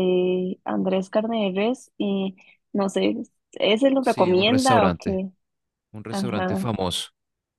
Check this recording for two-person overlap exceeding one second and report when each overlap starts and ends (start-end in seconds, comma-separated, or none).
4.0-5.2